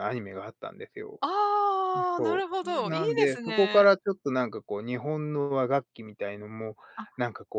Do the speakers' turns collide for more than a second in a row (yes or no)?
yes